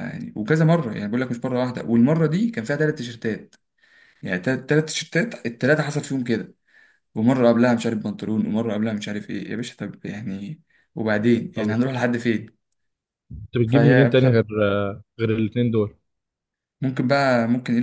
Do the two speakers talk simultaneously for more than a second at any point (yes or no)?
no